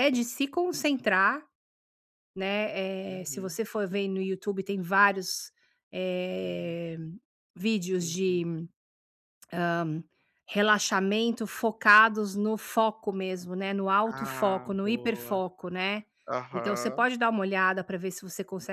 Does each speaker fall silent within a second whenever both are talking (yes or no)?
no